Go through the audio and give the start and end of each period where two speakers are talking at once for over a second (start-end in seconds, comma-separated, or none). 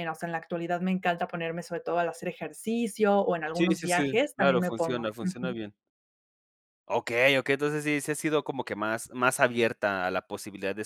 3.5-5.6